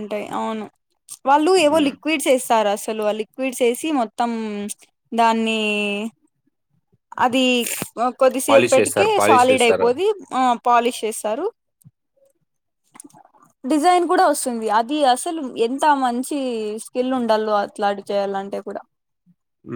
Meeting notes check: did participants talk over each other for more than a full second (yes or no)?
yes